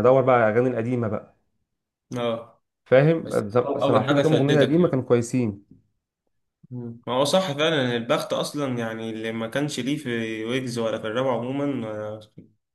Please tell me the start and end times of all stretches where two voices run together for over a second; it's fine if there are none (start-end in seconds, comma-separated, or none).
3.2-5.0